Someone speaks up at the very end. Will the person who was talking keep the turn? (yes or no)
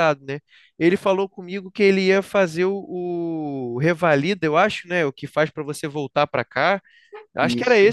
yes